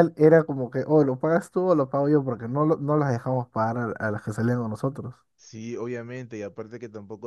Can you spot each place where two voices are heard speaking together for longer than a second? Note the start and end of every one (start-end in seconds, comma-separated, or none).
none